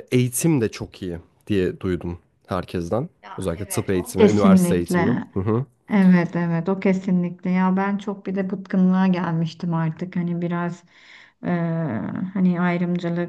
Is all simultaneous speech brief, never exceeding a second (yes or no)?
no